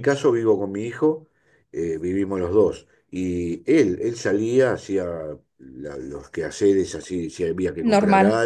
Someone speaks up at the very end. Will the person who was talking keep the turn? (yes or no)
yes